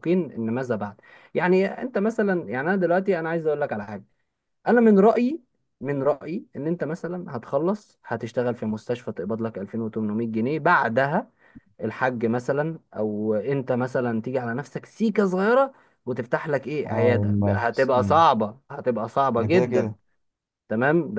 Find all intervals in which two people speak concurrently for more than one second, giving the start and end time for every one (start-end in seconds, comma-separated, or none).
16.9-18.2